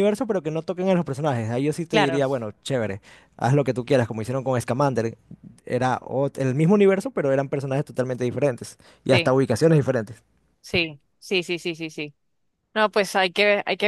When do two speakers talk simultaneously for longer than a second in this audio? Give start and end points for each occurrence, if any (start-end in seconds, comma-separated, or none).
none